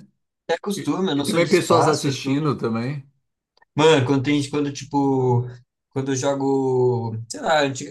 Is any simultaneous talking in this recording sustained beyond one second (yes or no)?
yes